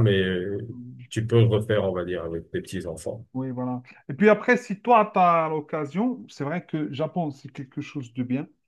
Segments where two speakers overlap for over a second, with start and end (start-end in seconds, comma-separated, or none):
none